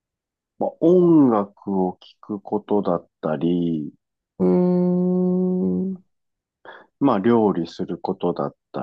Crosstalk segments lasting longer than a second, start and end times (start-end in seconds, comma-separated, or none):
none